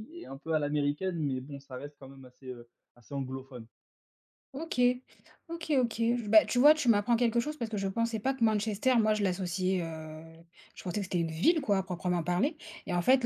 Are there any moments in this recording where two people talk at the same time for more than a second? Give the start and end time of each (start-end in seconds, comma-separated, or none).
none